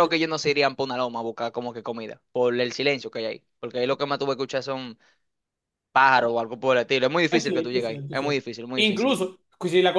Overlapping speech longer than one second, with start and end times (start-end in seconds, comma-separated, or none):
7.3-9.2